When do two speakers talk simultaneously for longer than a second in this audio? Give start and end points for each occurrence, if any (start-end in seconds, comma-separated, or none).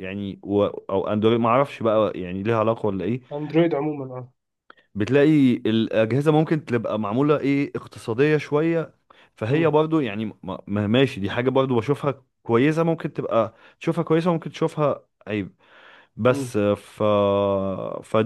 none